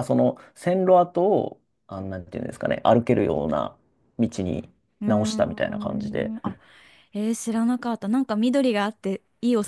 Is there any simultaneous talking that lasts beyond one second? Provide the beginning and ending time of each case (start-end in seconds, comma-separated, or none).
5.0-6.3